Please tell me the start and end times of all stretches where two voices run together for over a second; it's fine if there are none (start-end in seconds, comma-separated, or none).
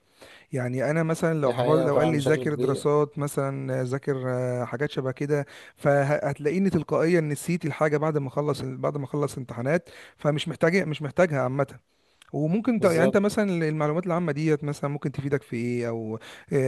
1.4-2.9